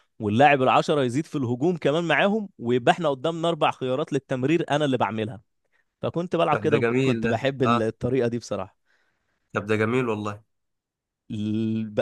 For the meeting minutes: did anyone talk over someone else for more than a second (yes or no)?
yes